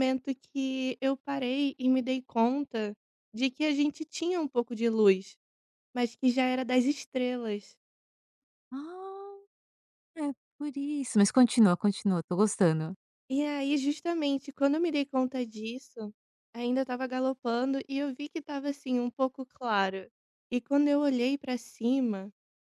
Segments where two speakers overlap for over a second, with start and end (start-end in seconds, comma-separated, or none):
none